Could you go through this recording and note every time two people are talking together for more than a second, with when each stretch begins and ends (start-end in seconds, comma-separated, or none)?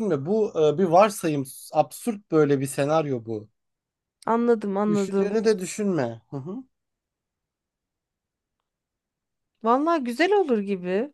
none